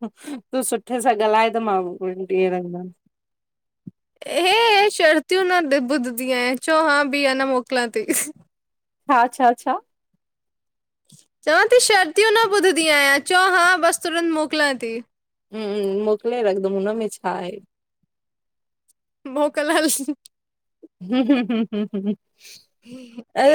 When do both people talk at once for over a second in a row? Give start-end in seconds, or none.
none